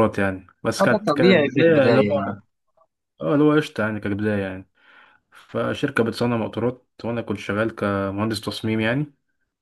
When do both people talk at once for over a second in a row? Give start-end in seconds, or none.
0.8-2.4